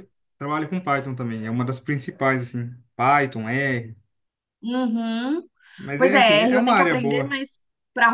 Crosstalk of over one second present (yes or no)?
yes